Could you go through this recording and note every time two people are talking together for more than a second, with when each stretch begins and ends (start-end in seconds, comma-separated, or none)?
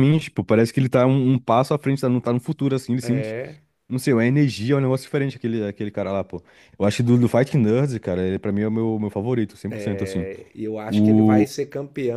none